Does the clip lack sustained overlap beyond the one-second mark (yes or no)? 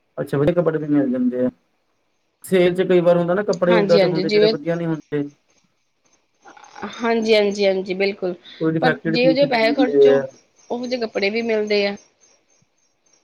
no